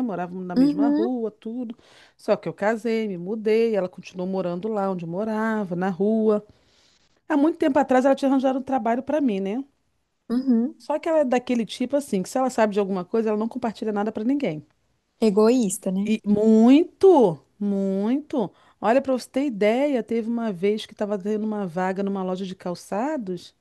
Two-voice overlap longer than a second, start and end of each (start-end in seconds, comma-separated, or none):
none